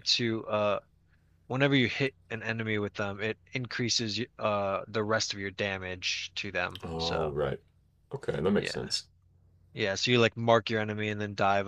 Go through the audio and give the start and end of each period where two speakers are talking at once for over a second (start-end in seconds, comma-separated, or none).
none